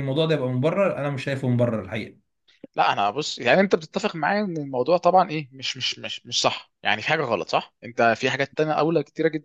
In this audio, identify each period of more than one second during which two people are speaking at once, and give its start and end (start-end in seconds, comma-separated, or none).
none